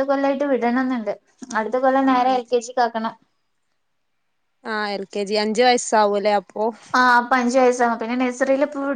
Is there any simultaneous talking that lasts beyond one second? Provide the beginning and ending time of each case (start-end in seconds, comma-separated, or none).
none